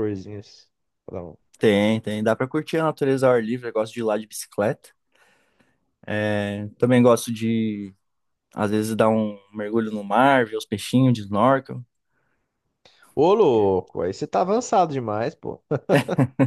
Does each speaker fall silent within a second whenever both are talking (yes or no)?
yes